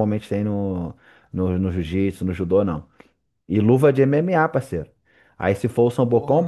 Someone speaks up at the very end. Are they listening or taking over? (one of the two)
listening